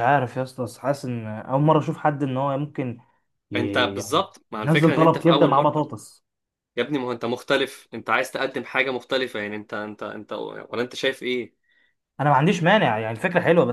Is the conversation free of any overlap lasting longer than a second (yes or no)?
no